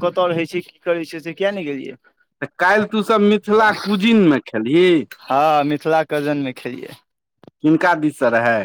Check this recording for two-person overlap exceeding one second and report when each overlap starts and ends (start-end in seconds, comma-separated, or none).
none